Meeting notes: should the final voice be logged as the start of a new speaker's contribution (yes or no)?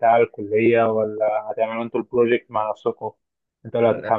no